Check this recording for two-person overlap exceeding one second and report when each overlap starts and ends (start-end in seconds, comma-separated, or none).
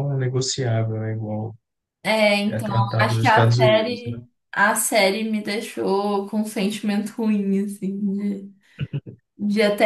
2.5-4.2